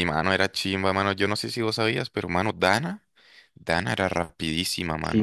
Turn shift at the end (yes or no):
yes